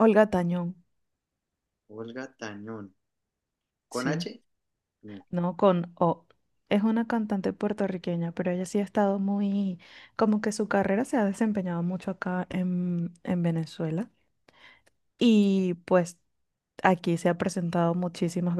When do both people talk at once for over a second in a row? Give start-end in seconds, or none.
none